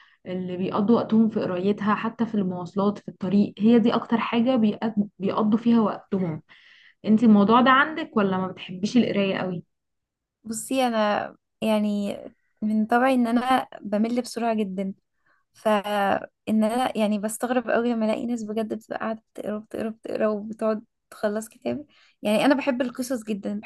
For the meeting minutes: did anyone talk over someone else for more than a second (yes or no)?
no